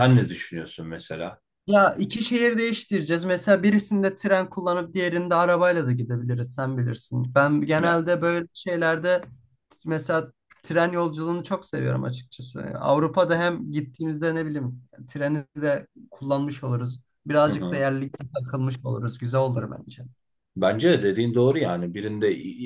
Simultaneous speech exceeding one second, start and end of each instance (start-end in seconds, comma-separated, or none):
none